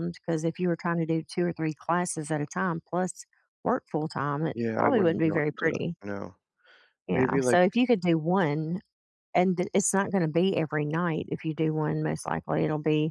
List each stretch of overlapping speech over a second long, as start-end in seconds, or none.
4.5-6.0